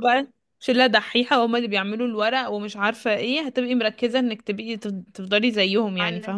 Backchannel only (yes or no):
no